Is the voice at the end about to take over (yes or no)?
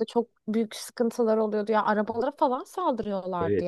yes